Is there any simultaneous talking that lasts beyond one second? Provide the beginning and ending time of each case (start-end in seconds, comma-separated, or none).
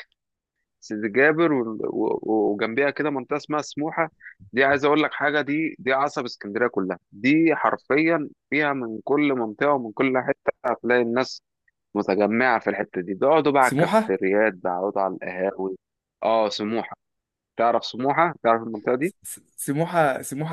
none